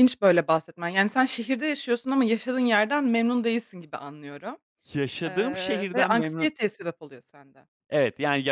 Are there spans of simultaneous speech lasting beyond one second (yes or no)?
yes